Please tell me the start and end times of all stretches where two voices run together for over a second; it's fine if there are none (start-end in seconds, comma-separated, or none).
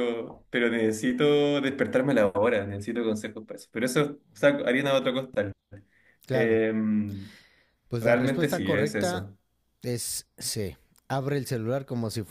8.0-9.3